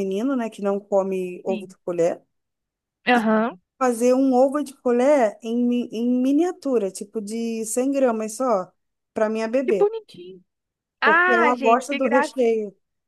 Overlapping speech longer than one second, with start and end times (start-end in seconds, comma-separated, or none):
11.0-12.6